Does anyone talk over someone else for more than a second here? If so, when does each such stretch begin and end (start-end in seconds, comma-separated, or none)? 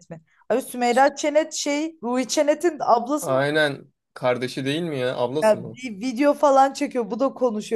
none